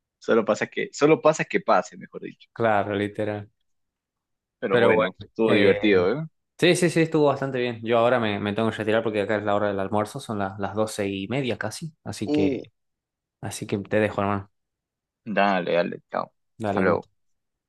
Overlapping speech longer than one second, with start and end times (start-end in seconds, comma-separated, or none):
4.7-6.1